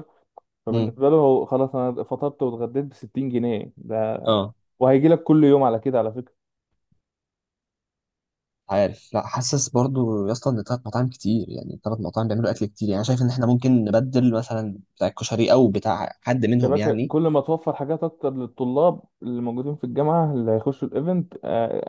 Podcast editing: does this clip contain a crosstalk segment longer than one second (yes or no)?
no